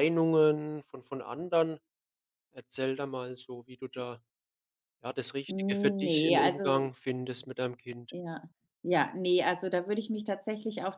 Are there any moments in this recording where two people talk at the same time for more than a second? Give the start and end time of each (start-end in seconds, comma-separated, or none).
5.5-6.9